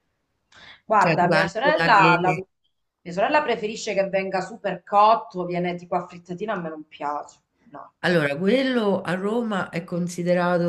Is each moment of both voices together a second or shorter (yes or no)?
no